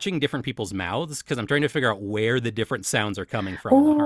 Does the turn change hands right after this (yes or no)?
yes